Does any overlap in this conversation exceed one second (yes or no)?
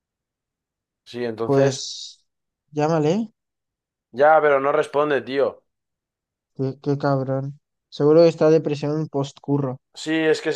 no